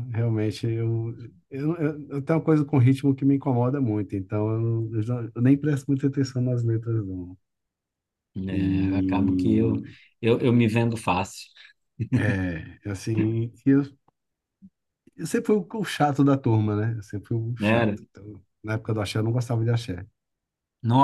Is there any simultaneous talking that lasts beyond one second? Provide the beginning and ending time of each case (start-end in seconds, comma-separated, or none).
none